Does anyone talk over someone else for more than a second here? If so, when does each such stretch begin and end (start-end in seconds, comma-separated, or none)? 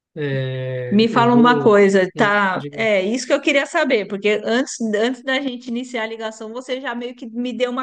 0.9-2.9